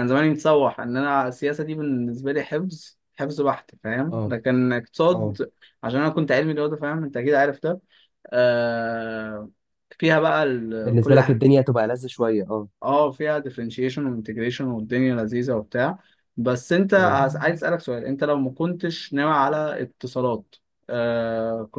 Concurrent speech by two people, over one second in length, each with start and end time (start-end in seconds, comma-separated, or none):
none